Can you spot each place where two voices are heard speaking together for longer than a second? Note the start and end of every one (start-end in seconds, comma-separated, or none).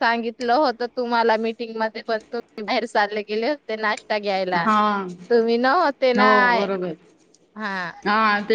none